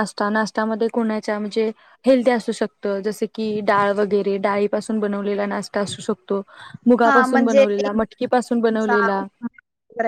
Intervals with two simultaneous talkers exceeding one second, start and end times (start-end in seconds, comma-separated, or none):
none